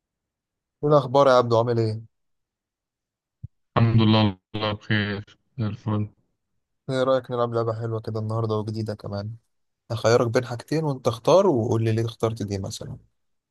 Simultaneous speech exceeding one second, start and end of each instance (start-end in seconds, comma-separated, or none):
none